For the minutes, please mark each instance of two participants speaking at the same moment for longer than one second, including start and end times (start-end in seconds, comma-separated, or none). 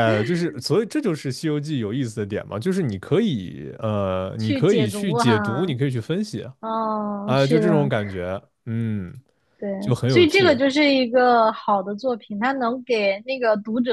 4.4-5.8